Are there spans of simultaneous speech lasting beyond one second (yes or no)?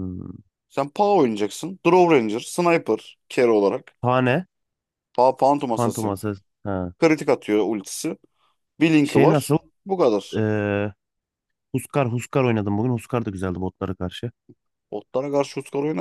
no